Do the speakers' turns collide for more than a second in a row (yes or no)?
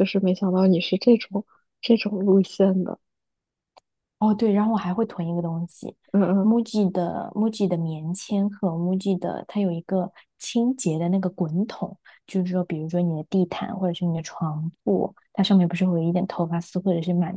no